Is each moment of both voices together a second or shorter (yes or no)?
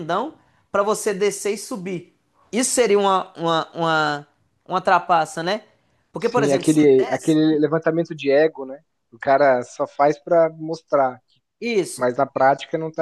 no